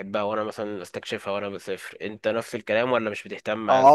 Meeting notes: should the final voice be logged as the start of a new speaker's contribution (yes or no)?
yes